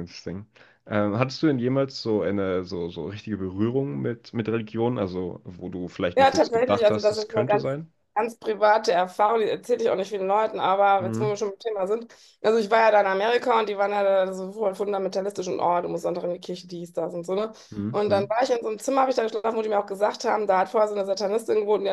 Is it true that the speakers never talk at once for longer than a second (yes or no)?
no